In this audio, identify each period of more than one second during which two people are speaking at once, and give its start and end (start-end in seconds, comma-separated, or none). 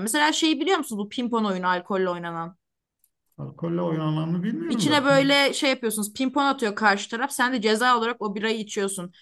none